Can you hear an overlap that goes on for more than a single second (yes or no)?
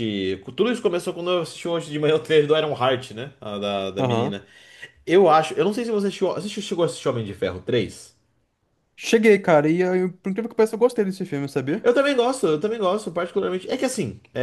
no